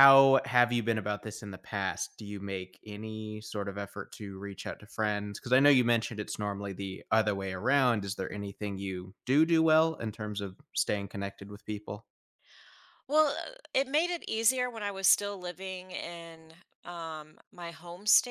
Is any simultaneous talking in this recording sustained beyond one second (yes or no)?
no